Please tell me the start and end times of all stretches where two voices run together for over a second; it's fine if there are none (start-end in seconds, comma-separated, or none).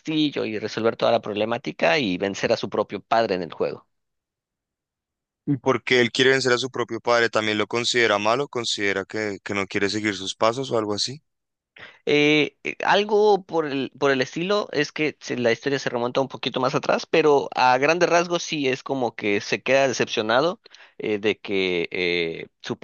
none